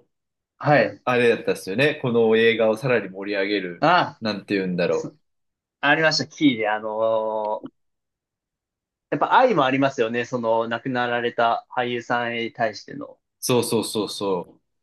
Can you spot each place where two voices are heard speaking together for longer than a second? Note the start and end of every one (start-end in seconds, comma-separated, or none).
none